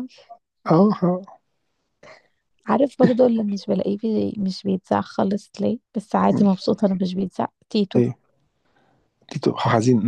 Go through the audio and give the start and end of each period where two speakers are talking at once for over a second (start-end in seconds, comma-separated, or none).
none